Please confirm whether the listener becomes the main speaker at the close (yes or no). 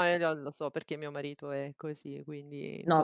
yes